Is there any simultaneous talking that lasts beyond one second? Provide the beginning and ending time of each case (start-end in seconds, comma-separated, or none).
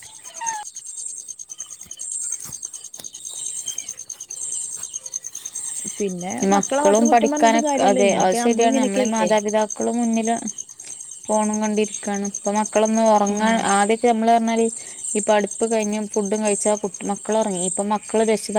6.5-9.3